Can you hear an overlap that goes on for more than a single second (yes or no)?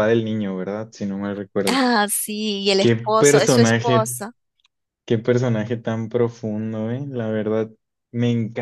yes